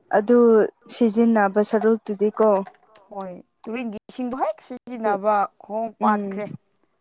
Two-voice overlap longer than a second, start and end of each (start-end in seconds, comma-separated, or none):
none